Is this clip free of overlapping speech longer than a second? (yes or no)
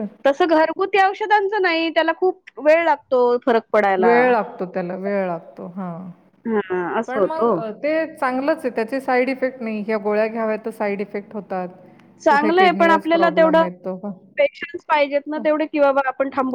no